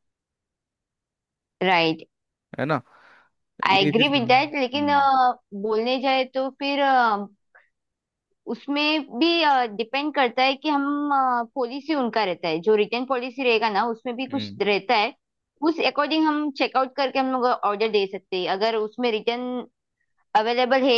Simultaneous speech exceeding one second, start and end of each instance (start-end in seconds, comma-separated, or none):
3.7-5.0